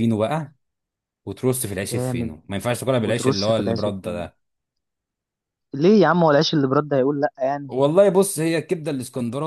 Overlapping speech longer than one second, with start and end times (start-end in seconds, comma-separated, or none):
3.0-4.3